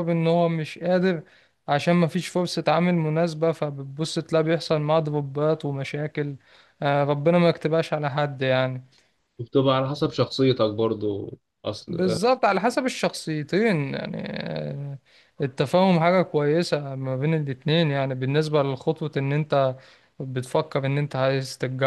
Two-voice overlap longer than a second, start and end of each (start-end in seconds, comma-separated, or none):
none